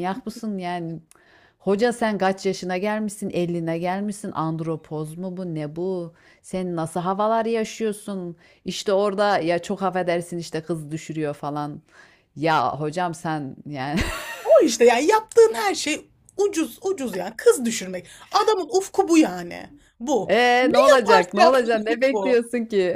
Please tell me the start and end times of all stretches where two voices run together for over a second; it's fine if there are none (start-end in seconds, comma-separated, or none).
20.2-22.4